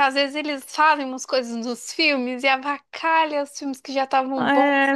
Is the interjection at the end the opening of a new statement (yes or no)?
yes